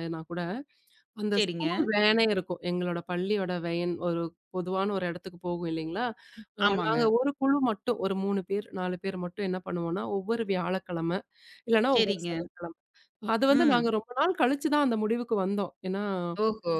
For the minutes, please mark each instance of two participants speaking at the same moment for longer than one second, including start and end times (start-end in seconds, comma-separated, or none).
none